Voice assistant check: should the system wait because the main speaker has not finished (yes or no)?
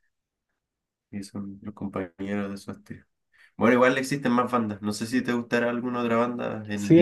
no